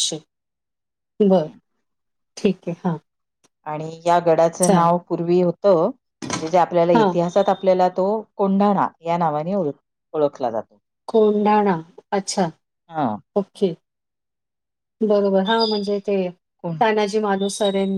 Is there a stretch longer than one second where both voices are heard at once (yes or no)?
no